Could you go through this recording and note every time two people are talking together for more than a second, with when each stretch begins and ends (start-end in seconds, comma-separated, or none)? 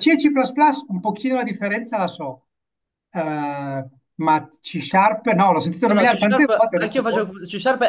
5.9-7.2